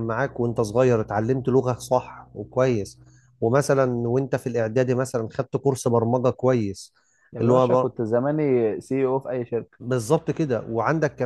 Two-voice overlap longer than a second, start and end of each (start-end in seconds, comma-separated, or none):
none